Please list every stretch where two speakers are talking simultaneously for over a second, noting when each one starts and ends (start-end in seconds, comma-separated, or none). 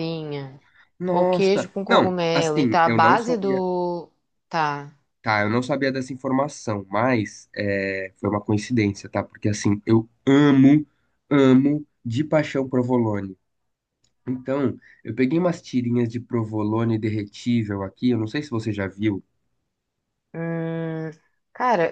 1.1-3.6